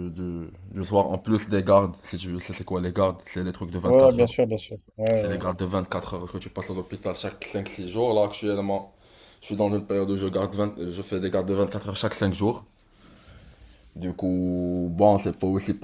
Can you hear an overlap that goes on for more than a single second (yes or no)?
no